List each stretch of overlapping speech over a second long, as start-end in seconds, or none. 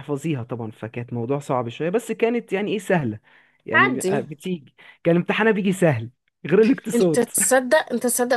none